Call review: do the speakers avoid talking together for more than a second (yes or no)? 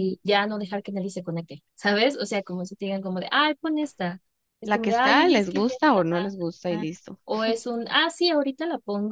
no